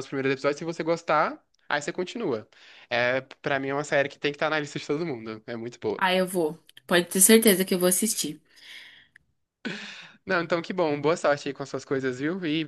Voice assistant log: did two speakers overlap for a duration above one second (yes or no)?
no